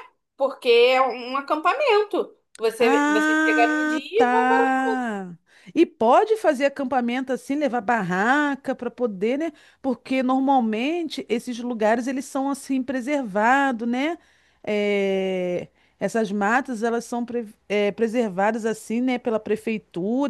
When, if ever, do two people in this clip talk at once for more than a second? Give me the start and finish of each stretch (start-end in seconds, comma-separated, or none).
2.8-4.7